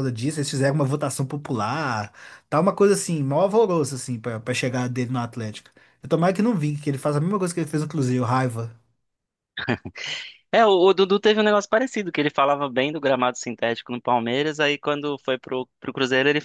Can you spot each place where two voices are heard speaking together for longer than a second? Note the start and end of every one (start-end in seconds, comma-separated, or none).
none